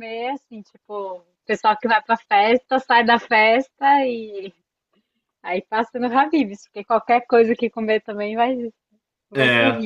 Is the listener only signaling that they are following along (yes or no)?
no